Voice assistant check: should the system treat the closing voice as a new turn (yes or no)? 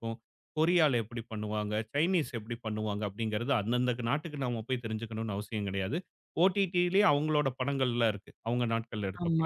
yes